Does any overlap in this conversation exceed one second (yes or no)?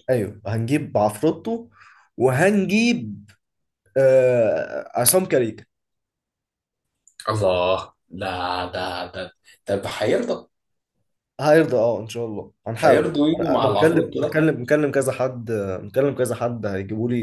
yes